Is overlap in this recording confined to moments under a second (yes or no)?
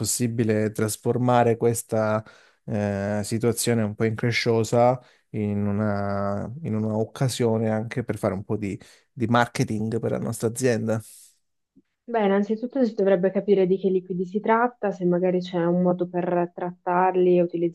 yes